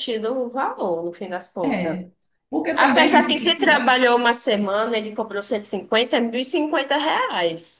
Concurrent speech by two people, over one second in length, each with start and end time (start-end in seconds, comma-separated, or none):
2.7-4.0